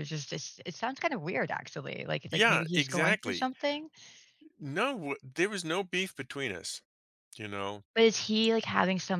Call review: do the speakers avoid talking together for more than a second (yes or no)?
no